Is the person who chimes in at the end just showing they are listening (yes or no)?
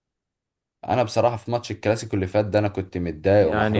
no